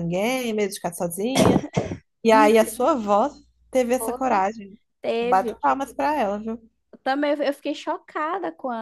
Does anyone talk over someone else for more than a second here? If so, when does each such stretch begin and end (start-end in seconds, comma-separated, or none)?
none